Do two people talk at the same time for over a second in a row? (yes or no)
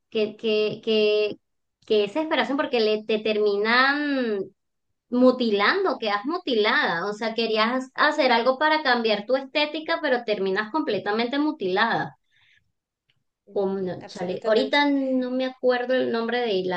yes